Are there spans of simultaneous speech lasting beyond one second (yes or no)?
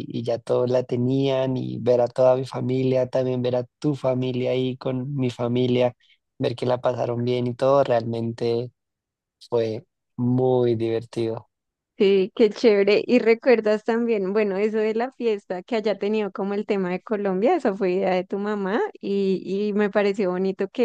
no